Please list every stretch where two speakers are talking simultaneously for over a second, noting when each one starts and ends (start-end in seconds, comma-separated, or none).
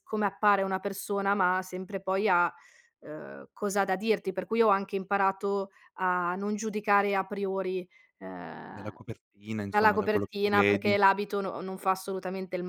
9.7-11.0